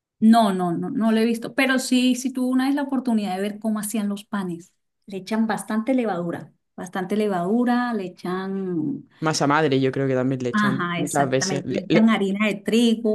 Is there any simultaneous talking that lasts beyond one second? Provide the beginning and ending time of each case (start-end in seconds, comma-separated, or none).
10.5-12.1